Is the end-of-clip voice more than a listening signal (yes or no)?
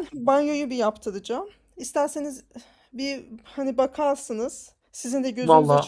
no